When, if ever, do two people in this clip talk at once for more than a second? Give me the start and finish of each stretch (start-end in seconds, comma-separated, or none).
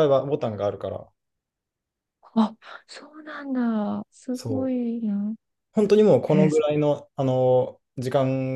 none